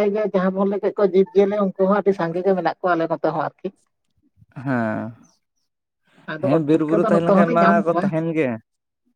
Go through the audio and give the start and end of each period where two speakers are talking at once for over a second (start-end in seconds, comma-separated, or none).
6.5-8.1